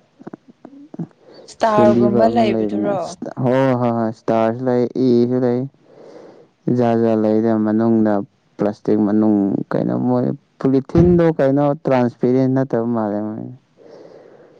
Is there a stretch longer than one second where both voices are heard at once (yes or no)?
yes